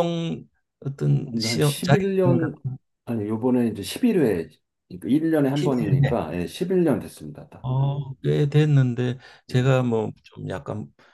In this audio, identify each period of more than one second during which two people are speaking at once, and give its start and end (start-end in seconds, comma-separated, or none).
1.2-2.6